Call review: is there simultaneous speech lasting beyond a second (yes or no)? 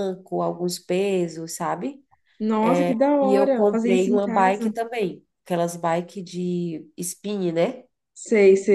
yes